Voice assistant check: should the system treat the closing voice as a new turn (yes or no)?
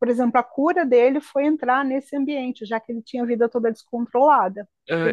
yes